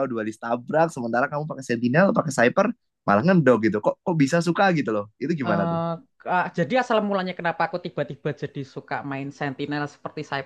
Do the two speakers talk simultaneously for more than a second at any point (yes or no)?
no